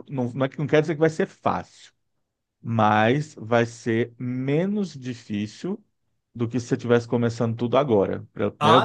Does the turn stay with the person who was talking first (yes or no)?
no